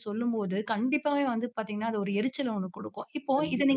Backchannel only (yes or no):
yes